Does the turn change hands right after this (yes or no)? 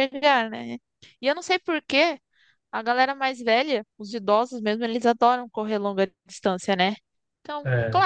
no